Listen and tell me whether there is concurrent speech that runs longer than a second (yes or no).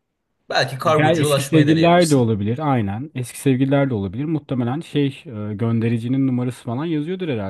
yes